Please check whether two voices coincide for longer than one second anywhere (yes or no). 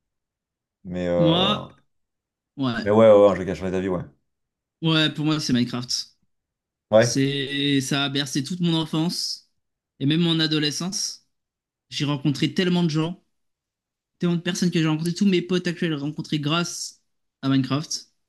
no